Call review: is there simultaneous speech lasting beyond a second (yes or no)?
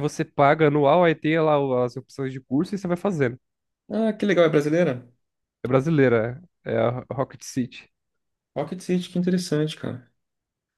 no